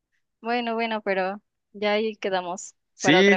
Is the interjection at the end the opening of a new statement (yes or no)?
yes